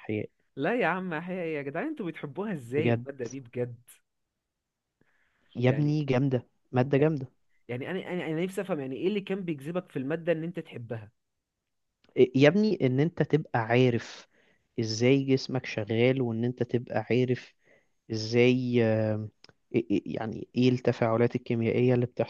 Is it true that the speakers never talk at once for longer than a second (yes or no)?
yes